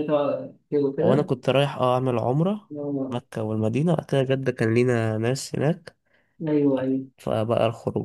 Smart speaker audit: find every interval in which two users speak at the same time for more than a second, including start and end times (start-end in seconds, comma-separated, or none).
none